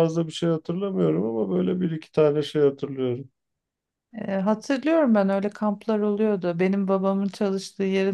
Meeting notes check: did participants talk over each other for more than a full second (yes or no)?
no